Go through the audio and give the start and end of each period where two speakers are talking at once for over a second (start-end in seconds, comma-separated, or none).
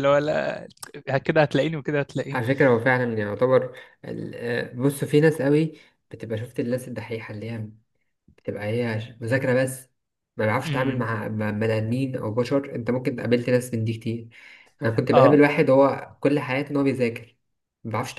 none